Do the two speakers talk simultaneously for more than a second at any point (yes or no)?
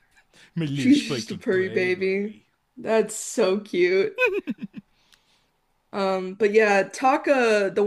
yes